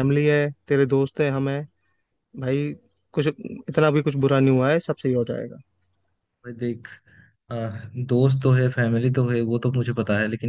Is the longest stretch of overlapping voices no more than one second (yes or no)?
yes